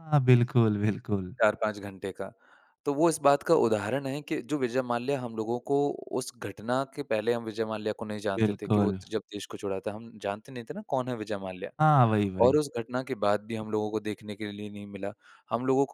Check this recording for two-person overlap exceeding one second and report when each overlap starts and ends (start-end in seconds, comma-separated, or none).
none